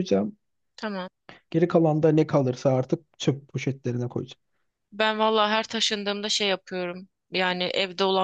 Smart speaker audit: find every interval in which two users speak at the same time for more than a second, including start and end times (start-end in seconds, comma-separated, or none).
none